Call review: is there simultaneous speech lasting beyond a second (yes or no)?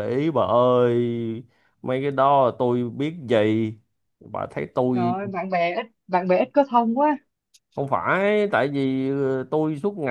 no